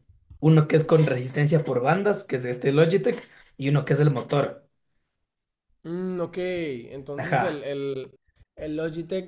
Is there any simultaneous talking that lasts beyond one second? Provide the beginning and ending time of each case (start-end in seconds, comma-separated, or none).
none